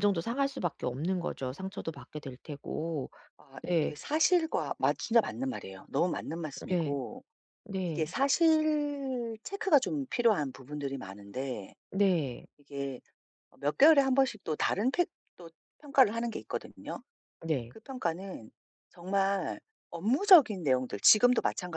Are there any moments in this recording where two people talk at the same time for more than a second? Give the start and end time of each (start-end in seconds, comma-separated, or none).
none